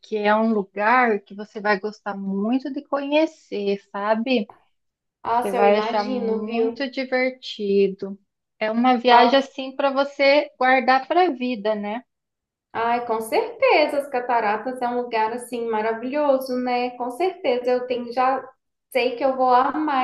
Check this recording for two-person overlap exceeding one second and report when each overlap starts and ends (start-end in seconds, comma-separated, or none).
5.4-6.9